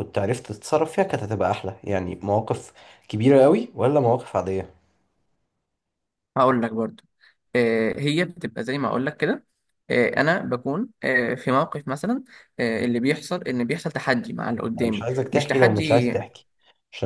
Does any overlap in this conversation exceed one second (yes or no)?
yes